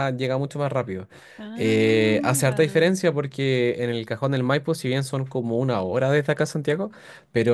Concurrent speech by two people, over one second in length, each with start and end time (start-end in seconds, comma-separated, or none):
1.6-2.9